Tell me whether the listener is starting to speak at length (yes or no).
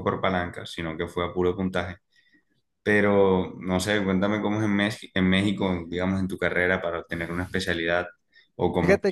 yes